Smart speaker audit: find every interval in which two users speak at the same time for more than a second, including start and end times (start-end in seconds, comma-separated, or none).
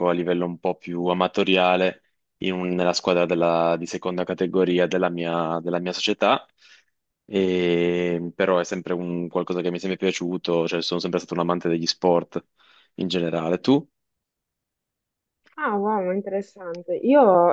none